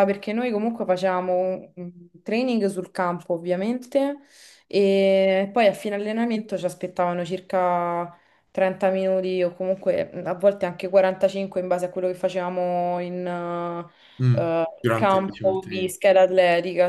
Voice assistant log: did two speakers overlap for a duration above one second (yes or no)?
yes